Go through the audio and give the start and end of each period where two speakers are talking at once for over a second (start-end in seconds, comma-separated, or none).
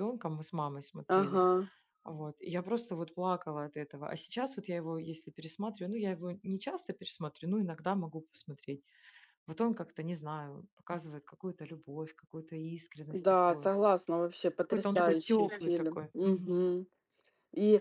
14.6-16.7